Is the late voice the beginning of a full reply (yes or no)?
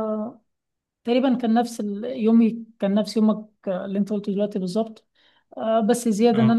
no